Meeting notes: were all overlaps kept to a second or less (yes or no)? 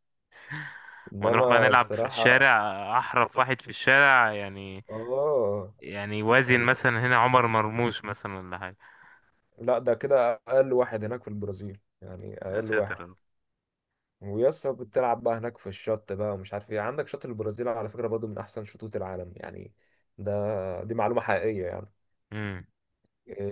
no